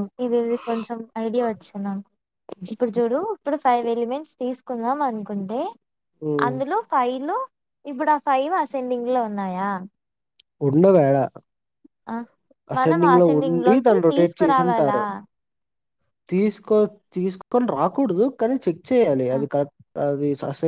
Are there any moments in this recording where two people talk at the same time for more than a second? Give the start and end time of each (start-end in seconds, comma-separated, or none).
12.8-15.0